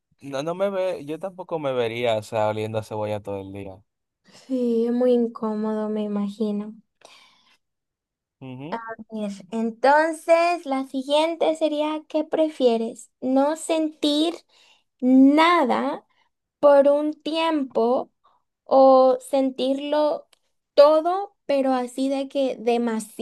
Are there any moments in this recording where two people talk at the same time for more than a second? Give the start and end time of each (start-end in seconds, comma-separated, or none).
none